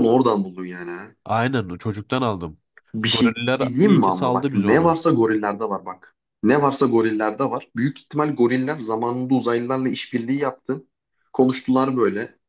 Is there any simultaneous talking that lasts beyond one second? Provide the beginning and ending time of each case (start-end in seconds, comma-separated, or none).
3.0-5.0